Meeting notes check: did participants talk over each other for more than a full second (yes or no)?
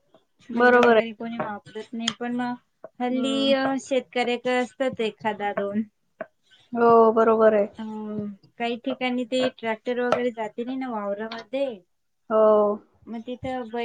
no